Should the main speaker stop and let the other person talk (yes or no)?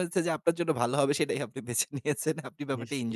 no